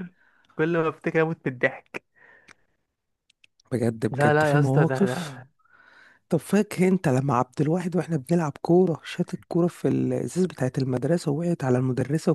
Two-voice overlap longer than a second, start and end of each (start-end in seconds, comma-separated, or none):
4.1-5.4